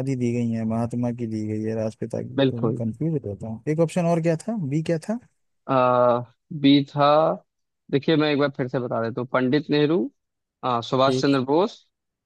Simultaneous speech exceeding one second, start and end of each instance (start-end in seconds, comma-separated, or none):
none